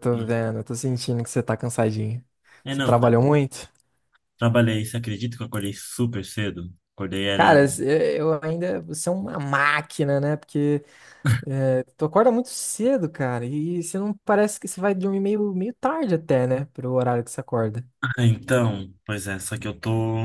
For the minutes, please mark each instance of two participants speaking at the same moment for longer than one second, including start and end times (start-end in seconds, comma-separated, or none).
none